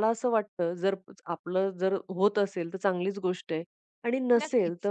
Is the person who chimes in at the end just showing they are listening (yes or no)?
yes